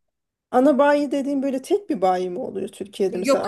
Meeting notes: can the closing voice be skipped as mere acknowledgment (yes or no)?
no